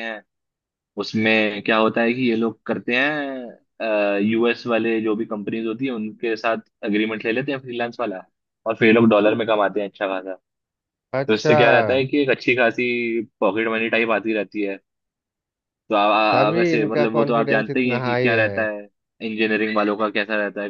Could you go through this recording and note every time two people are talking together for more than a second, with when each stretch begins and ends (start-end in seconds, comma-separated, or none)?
16.5-18.7